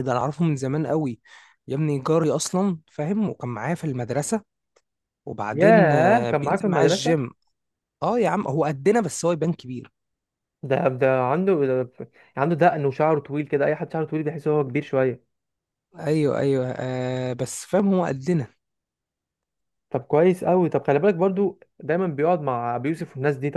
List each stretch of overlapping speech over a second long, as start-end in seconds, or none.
5.5-7.2